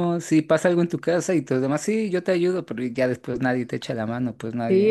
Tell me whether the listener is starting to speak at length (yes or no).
yes